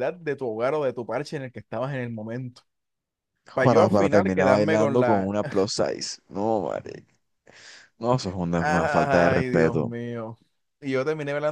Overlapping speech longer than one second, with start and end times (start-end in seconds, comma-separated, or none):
3.6-5.3, 8.6-9.9